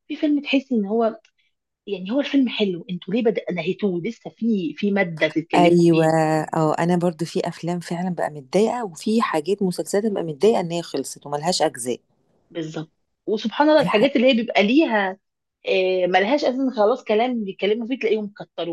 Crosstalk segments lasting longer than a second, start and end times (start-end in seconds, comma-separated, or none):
none